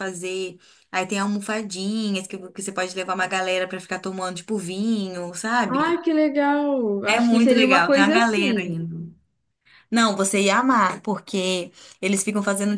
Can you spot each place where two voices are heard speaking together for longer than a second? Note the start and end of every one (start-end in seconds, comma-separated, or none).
7.0-8.7